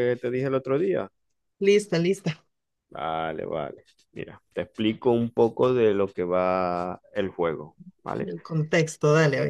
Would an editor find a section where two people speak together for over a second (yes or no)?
no